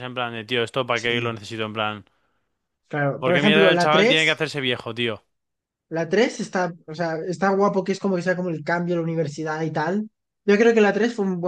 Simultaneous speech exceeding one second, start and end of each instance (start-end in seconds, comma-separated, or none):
3.2-4.4